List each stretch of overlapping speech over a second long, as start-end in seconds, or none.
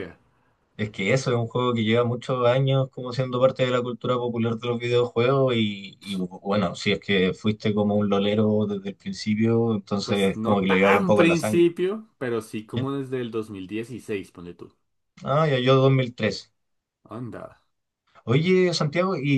10.0-11.7